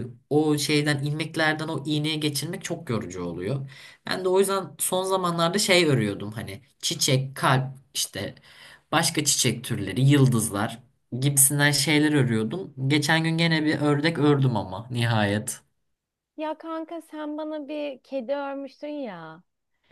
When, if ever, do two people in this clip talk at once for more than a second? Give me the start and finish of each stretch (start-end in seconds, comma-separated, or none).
none